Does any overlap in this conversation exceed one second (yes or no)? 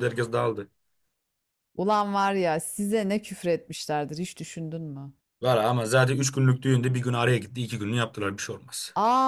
no